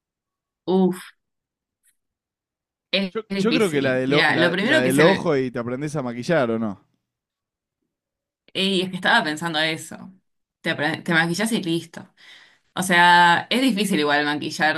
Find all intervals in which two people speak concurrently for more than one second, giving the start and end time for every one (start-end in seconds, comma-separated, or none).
3.1-5.3